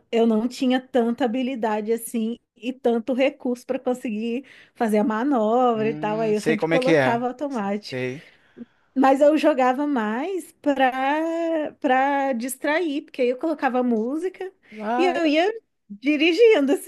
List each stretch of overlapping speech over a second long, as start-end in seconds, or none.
5.7-7.3